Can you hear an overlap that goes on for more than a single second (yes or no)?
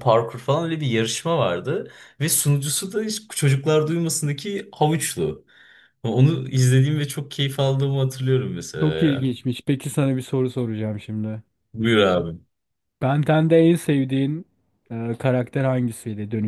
no